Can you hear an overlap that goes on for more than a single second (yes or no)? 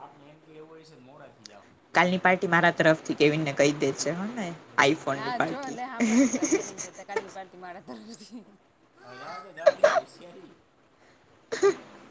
no